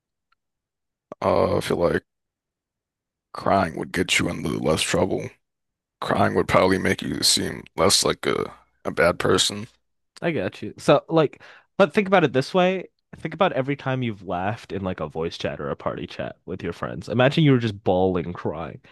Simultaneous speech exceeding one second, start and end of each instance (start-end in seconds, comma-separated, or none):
none